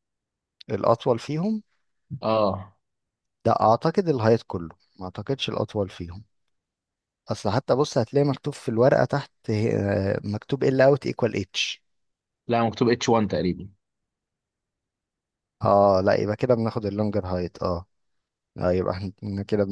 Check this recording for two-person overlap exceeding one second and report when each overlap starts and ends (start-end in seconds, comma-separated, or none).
none